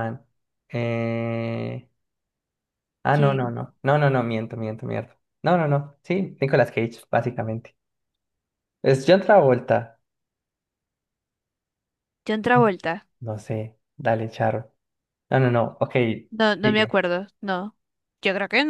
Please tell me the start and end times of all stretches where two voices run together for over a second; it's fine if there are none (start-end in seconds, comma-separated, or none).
none